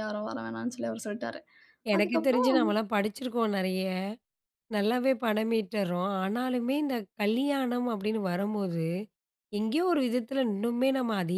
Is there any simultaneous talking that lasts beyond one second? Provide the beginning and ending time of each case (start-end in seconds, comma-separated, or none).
none